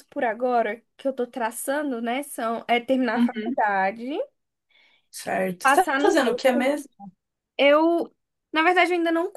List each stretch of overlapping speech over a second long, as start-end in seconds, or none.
5.6-6.8